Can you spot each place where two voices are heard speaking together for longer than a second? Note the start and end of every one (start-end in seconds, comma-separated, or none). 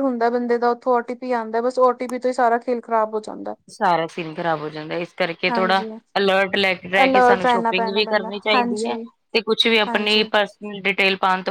7.0-8.9